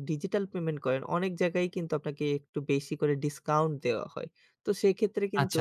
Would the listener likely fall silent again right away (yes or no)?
no